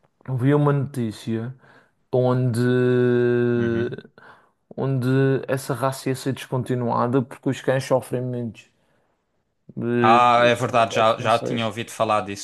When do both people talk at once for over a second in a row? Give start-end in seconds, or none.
10.0-11.7